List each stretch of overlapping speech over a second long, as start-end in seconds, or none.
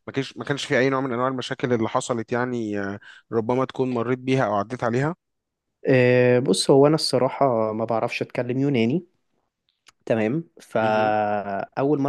none